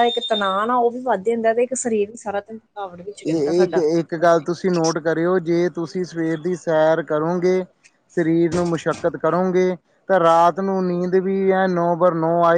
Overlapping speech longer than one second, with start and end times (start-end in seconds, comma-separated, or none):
none